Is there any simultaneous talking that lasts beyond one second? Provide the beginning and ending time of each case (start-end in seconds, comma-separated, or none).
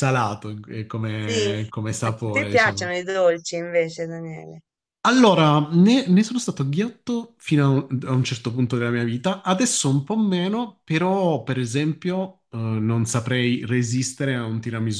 1.2-2.9